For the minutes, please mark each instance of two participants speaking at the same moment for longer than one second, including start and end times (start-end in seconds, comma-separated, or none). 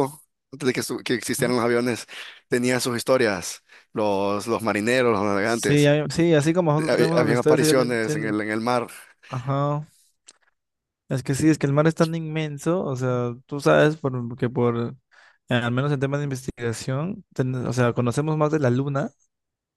6.8-8.4